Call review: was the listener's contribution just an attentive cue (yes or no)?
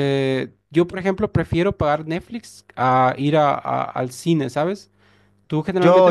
no